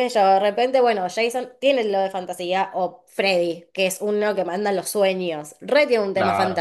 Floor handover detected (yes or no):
no